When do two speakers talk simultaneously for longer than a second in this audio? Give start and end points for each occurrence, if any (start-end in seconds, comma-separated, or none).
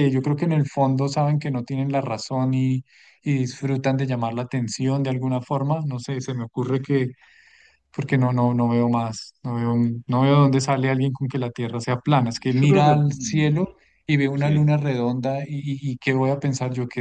12.1-13.5